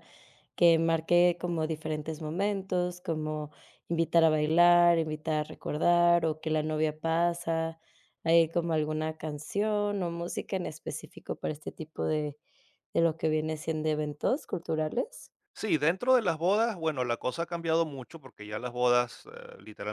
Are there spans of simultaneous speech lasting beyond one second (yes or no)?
no